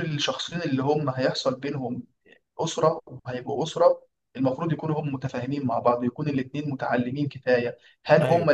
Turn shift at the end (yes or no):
no